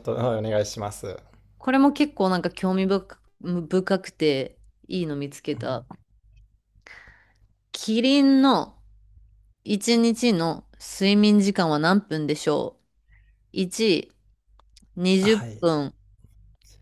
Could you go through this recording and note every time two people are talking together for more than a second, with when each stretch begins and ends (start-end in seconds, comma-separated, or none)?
none